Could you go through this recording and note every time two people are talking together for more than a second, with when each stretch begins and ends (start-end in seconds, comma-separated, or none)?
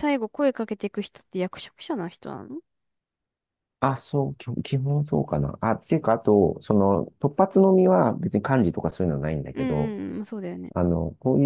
none